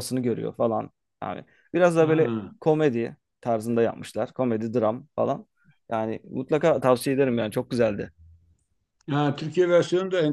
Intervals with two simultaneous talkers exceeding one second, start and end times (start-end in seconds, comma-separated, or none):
none